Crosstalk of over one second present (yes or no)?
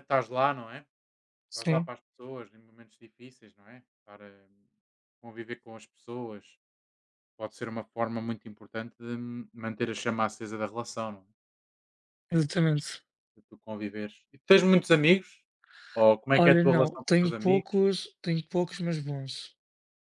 yes